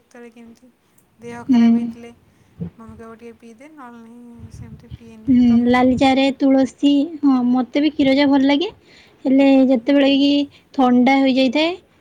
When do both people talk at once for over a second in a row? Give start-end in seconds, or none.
none